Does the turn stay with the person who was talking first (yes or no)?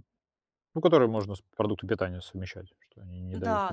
no